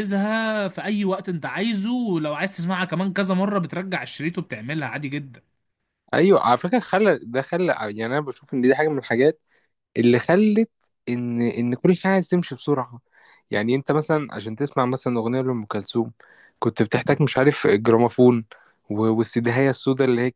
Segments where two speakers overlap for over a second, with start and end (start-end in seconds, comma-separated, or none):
none